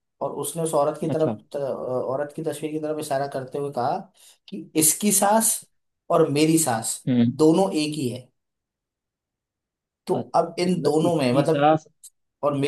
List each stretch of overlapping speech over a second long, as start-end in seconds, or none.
10.1-11.7